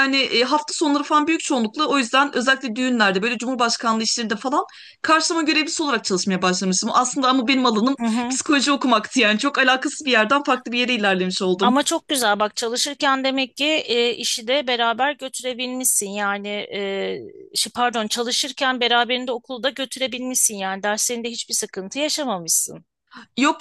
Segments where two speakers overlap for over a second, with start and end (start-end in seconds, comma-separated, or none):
none